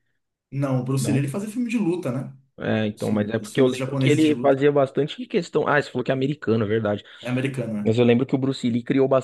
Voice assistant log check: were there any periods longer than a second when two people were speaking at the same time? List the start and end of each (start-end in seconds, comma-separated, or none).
3.0-4.6